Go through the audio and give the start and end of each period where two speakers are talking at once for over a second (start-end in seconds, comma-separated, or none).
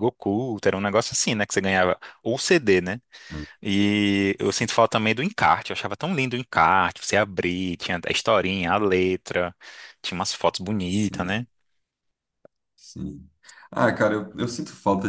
none